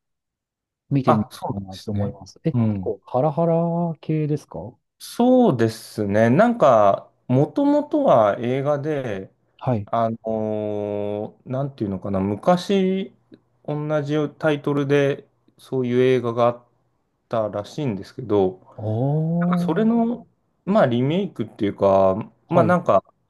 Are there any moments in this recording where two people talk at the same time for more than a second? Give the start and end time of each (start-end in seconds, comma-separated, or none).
1.1-2.9